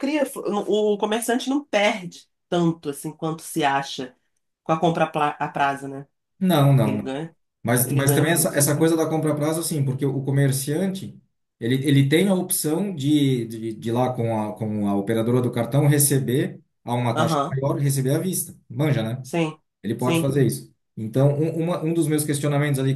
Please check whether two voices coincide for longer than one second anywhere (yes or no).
yes